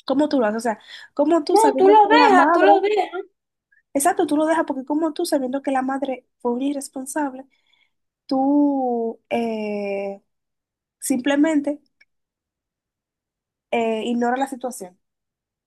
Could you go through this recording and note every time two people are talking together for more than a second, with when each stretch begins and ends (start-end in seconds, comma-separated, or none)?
1.5-2.8